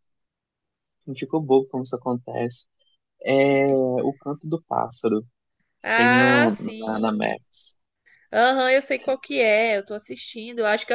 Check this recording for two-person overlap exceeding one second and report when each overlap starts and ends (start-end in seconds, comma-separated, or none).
5.8-7.4